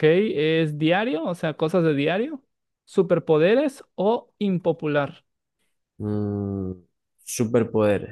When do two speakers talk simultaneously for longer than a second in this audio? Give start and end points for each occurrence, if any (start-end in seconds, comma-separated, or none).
none